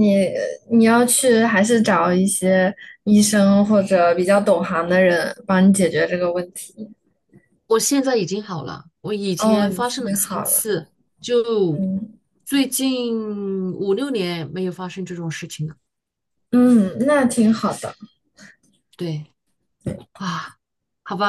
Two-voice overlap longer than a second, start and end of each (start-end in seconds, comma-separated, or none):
9.4-10.7